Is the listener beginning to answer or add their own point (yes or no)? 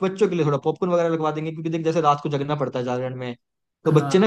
no